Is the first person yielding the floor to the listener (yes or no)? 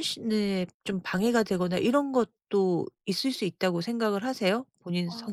yes